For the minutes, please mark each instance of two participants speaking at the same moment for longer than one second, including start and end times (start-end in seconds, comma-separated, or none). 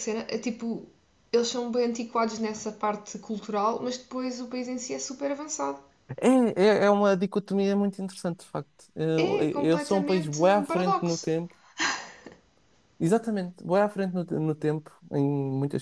9.2-11.3